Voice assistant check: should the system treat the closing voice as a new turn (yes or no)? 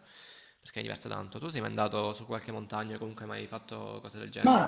yes